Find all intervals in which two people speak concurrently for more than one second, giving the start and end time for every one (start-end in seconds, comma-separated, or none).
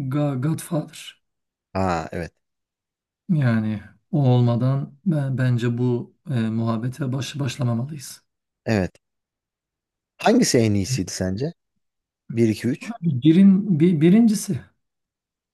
none